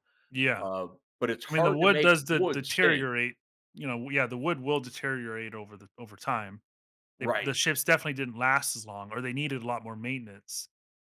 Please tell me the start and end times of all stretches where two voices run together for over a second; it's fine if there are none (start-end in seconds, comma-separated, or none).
1.5-3.1